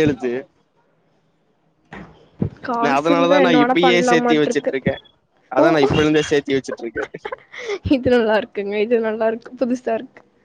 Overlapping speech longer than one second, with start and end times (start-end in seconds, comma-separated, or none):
2.8-4.7